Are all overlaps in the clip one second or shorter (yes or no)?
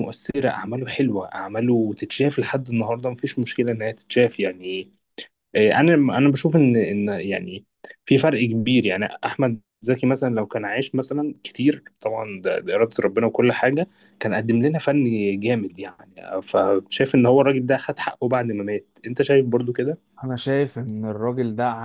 yes